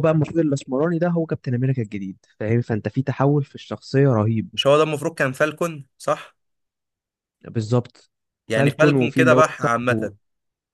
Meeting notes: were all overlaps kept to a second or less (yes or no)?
no